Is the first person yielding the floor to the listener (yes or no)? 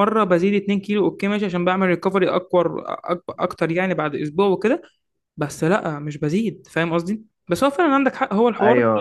no